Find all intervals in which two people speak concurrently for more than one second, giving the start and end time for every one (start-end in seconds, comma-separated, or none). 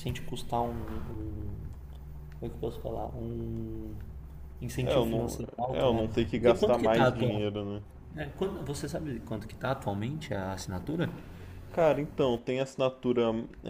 4.8-7.5